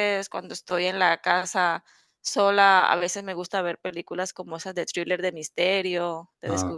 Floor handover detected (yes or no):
no